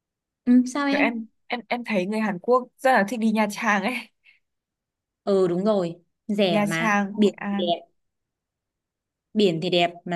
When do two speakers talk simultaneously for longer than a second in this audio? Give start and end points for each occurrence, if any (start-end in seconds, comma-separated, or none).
6.5-7.8